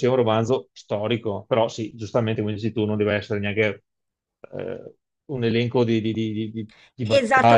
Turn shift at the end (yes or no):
yes